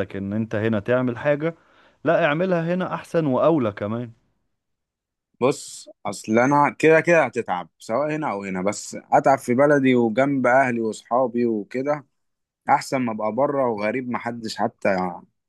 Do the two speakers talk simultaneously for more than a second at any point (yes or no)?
no